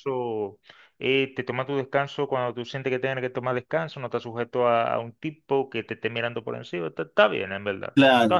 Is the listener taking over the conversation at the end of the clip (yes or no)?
yes